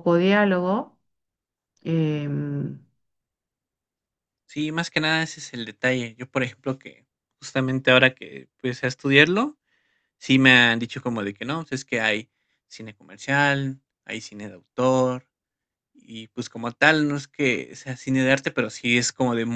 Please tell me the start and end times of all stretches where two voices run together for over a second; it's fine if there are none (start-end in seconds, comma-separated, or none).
none